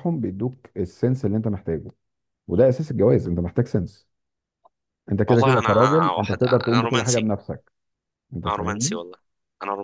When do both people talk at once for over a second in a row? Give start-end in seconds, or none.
5.3-7.3